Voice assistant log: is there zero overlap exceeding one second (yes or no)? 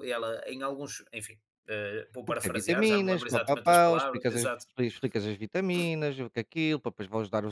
no